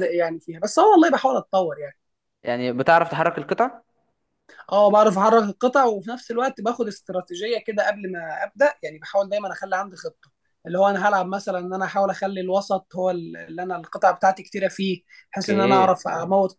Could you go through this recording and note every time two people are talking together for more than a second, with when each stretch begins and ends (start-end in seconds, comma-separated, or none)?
none